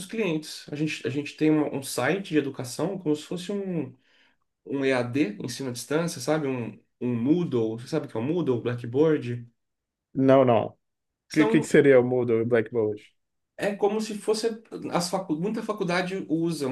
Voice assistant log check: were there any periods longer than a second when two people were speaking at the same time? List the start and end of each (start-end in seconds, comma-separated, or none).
none